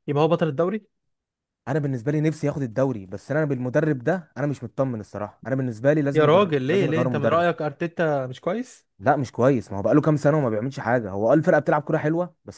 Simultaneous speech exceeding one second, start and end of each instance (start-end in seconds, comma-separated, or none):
6.1-7.5